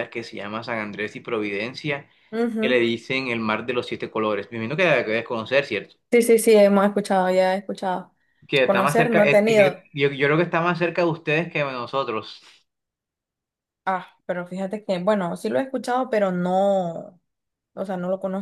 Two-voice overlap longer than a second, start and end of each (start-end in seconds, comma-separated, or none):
8.6-9.8